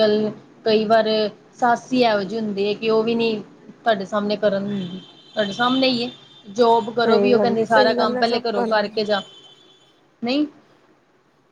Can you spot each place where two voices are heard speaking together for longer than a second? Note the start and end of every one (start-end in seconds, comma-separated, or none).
7.0-9.0